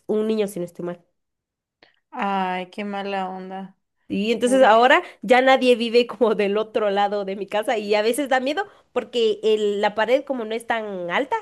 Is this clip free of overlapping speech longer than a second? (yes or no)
yes